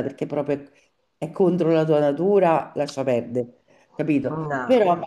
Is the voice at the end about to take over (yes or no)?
no